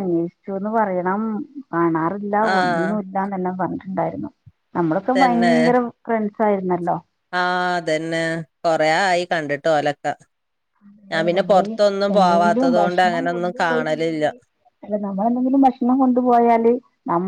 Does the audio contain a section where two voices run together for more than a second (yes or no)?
yes